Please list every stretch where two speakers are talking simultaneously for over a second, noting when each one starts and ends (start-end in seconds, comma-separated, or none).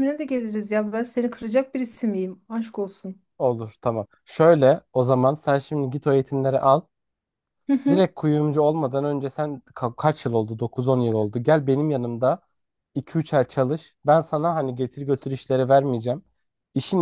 none